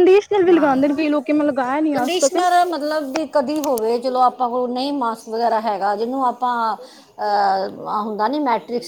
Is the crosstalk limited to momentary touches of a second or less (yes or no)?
yes